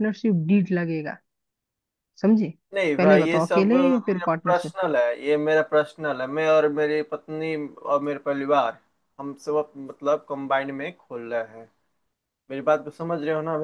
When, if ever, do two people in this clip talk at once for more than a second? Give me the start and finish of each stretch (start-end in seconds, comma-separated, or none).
3.0-4.7